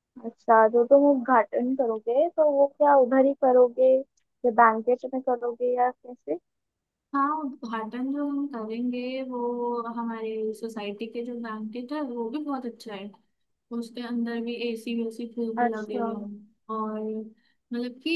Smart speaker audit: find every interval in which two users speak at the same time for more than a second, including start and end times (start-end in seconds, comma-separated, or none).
none